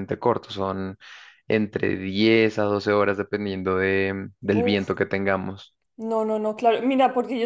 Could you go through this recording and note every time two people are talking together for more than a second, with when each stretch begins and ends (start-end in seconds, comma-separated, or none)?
none